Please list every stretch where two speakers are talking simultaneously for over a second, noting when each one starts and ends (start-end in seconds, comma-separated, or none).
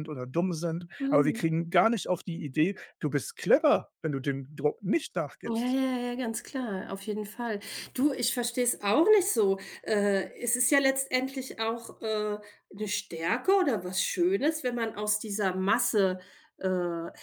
none